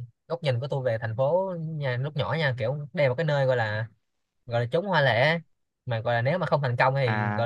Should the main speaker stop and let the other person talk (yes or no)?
no